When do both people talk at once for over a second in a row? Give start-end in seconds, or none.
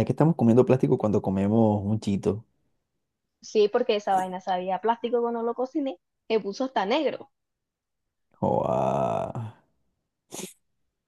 none